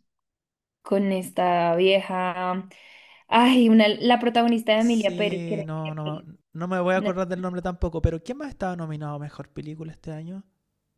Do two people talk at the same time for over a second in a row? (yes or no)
yes